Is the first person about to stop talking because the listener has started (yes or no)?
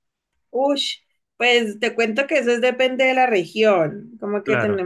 no